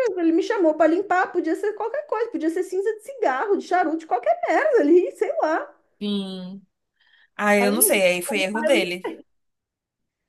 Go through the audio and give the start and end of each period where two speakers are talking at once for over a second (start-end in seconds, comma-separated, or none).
7.6-9.1